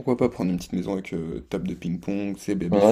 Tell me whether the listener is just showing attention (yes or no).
no